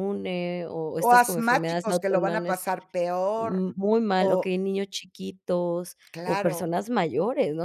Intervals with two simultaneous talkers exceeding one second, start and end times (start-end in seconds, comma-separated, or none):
1.0-2.6